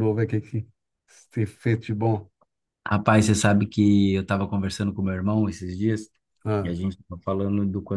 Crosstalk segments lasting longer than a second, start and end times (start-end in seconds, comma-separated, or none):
none